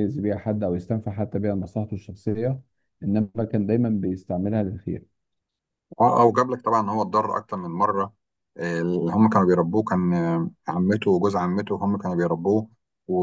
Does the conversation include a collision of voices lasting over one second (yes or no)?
no